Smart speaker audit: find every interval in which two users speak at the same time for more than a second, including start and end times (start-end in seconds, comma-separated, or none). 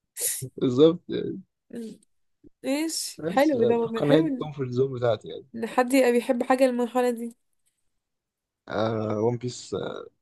3.2-4.5